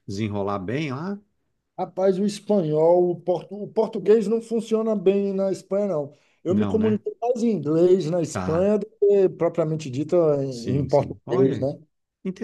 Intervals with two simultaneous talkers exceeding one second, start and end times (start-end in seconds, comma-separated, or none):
10.5-11.7